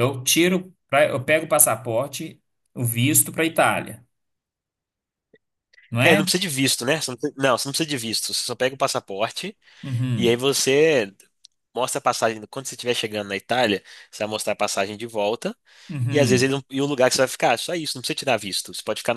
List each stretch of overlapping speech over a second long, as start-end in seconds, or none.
none